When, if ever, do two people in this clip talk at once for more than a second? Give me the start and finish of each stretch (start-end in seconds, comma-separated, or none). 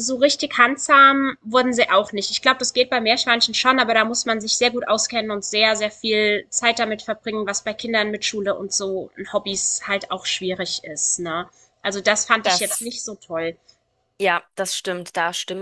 none